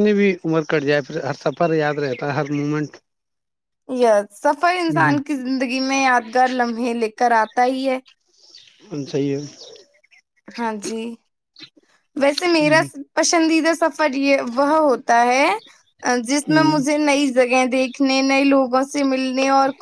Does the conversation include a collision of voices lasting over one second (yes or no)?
no